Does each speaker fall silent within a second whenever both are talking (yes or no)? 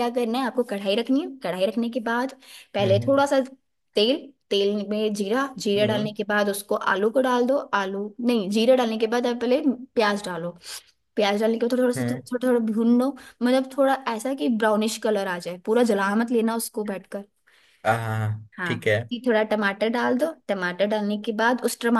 yes